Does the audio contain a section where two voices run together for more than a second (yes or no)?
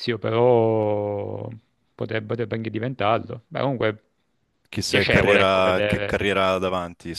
yes